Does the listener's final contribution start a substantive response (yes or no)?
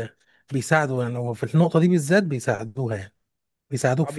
yes